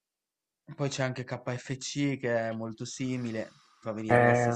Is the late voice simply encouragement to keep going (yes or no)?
no